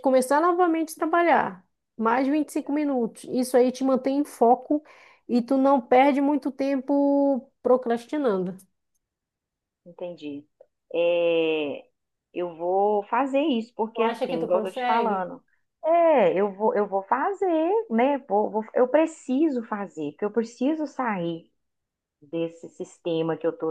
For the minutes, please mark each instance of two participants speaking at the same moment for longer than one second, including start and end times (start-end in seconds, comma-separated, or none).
13.9-15.3